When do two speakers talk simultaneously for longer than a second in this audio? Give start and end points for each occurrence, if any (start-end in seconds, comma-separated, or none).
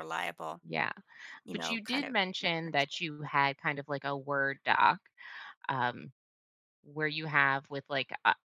1.5-2.9